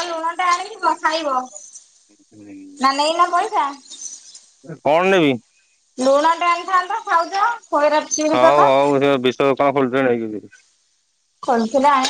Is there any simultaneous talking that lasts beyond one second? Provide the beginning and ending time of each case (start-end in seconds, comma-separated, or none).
none